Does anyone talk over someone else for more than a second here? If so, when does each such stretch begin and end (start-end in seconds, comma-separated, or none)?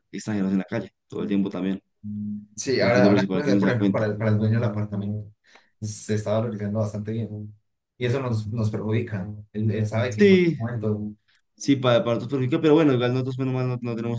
2.8-4.0